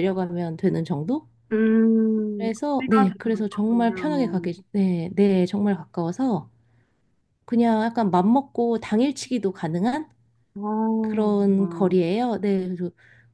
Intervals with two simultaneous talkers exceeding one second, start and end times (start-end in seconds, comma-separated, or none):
2.4-4.5